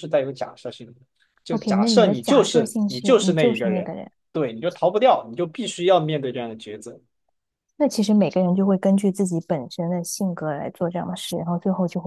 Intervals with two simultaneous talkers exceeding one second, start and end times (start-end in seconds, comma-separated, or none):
1.5-3.9